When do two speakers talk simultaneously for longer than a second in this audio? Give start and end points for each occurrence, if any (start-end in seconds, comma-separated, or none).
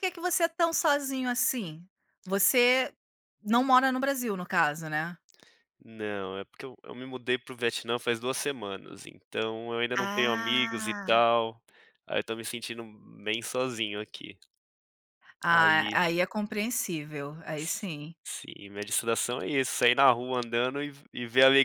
10.0-11.2